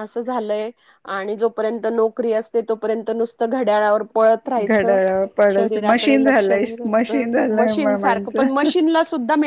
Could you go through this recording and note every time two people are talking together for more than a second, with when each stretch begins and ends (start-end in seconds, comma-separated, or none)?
5.6-8.7